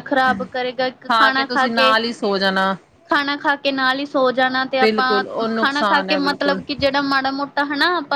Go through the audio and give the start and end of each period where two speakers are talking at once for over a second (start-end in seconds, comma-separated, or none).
4.8-6.6